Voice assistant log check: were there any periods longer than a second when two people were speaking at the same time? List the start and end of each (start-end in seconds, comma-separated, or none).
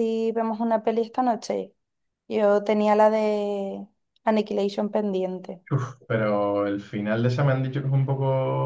none